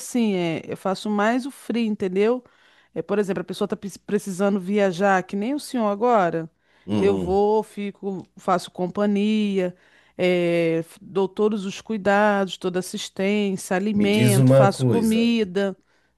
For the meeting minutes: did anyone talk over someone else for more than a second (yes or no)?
yes